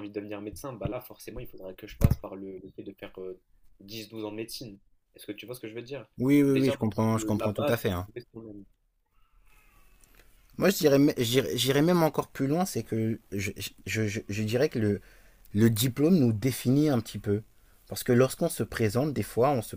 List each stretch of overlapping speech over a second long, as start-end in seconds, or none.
6.5-8.1